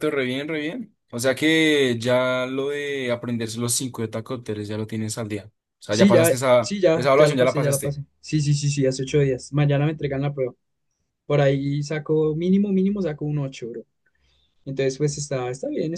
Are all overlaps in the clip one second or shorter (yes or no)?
no